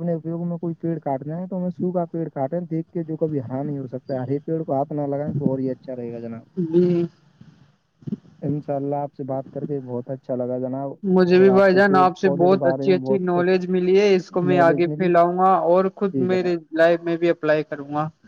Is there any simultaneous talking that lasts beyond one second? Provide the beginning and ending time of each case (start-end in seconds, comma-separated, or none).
11.4-13.6